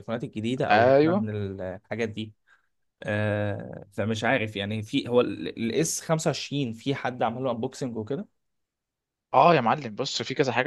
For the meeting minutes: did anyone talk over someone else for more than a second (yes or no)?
no